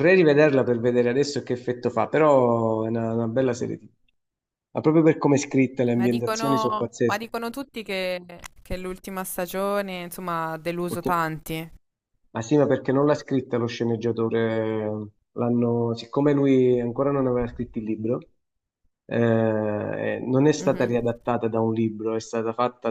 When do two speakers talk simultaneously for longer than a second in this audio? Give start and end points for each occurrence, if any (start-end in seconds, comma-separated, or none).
5.9-7.3